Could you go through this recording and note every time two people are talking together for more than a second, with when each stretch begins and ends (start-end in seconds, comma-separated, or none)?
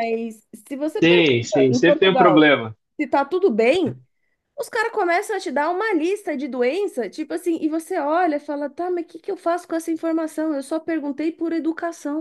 1.0-2.5